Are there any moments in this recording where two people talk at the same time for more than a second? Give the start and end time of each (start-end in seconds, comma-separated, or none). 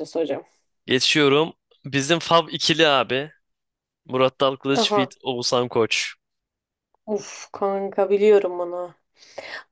none